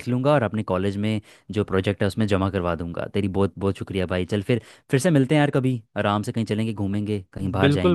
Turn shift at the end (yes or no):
yes